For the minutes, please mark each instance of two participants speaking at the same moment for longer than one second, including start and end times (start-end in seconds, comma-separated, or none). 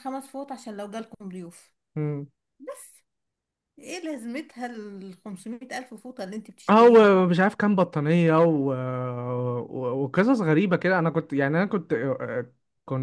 none